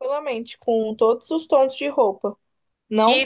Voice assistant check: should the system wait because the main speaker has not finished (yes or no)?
no